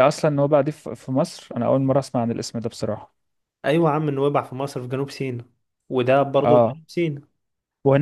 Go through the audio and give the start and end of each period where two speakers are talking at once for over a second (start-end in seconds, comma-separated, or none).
none